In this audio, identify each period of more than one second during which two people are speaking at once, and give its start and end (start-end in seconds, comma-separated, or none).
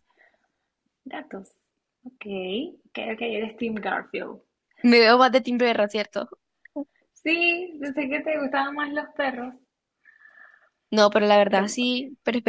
none